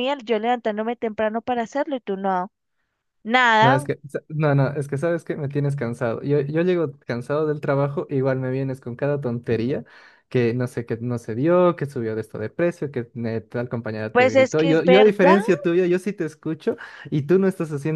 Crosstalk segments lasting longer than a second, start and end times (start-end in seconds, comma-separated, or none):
14.1-15.4